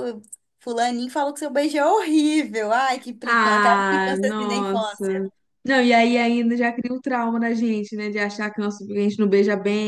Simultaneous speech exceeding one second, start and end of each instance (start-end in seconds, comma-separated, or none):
3.2-5.2